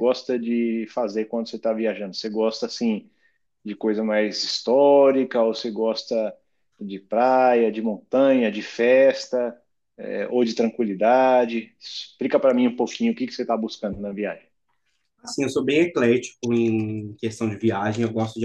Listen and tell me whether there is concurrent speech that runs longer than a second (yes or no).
no